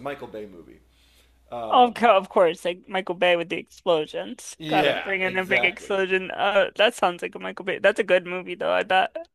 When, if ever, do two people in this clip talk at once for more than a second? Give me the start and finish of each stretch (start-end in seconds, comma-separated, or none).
4.6-6.1